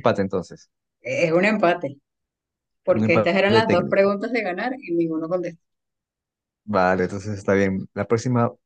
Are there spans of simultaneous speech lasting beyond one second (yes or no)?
yes